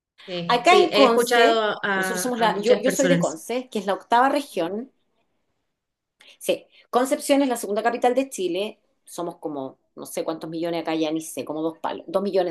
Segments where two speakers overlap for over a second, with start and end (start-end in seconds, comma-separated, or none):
0.5-3.4